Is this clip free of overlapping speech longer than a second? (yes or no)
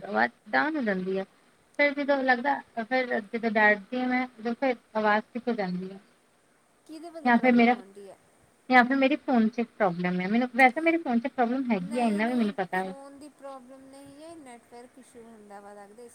yes